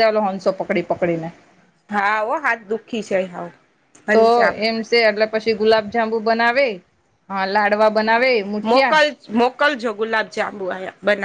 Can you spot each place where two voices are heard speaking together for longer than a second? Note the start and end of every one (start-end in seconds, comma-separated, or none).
none